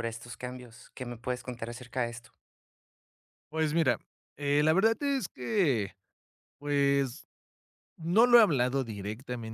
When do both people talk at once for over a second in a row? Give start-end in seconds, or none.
none